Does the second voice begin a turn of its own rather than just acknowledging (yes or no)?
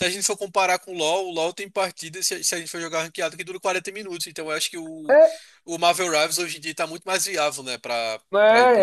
yes